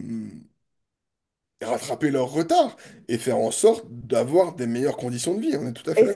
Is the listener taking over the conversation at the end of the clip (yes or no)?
yes